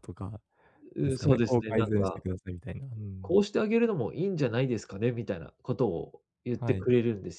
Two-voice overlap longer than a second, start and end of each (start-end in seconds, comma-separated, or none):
1.0-2.2